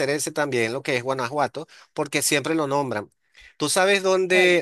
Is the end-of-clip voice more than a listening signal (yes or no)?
no